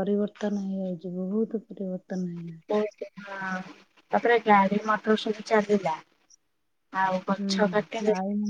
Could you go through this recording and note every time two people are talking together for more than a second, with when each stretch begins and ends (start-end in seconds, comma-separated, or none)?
none